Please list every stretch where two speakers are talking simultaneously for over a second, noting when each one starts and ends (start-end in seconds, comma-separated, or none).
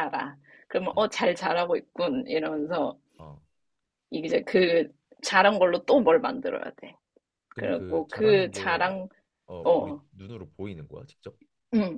7.6-8.9